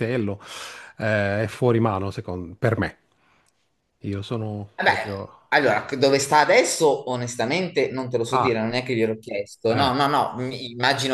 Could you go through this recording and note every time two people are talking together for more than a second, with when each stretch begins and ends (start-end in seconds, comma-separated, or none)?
none